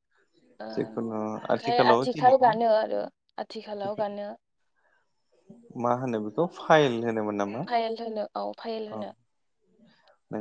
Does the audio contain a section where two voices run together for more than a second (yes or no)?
yes